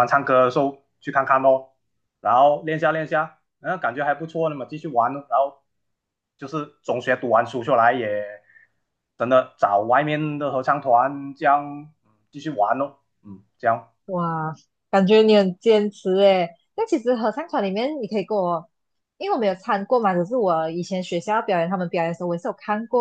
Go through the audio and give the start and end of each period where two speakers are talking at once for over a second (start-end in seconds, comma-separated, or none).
none